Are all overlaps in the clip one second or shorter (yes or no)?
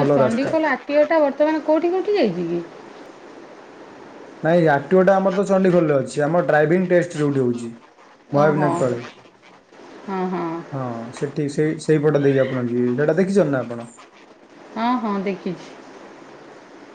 yes